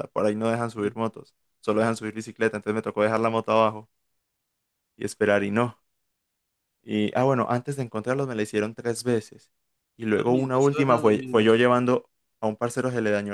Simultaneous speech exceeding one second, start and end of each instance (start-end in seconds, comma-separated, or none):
10.1-11.6